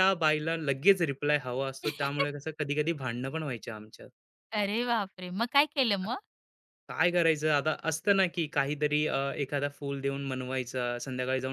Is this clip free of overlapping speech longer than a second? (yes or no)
yes